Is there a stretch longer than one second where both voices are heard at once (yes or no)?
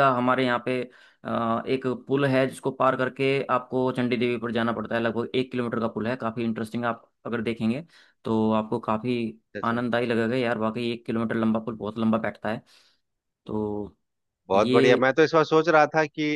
no